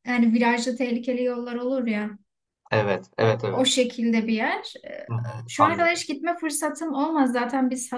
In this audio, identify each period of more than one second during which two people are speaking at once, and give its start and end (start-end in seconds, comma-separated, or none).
none